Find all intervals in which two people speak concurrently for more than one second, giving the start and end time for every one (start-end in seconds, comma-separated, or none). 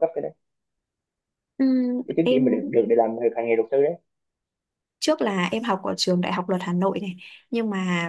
none